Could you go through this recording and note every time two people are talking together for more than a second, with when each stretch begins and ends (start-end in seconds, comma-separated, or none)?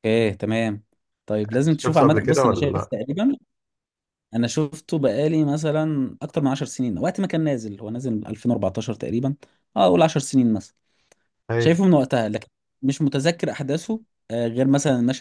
1.6-2.9